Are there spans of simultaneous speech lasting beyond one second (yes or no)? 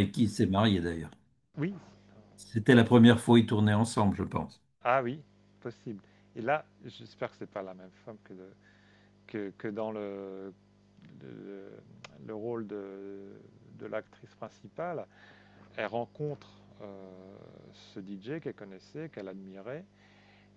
no